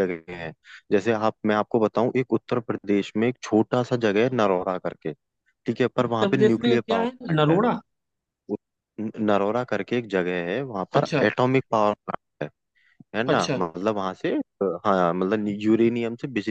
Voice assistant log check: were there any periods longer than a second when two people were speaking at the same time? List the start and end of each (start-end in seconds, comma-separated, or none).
6.0-7.6